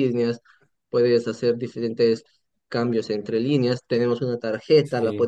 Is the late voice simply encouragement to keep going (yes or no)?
yes